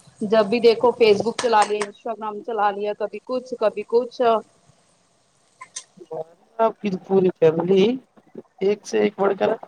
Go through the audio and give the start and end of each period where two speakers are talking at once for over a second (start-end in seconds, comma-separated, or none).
none